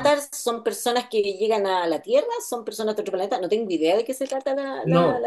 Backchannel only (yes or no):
no